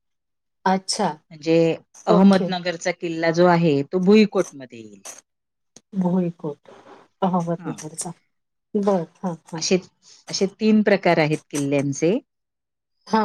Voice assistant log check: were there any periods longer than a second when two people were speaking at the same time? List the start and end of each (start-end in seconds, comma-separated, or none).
none